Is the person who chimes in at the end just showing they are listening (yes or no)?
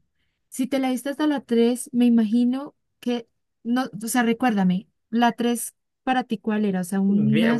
no